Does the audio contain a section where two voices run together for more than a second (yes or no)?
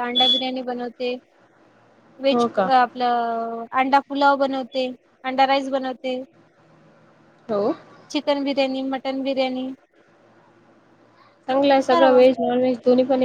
no